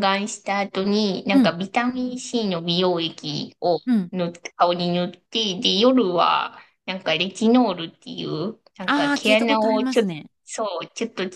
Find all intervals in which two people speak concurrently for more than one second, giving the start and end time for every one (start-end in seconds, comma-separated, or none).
8.8-10.3